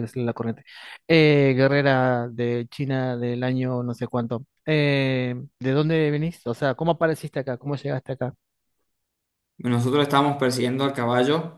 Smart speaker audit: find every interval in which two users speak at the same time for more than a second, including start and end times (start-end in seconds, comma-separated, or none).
none